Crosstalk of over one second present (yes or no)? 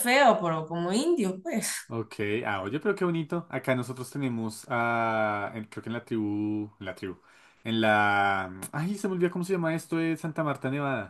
no